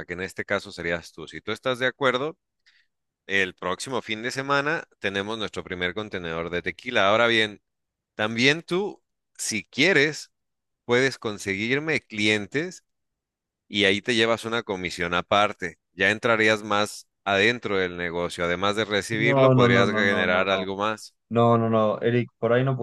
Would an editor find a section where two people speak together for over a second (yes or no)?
yes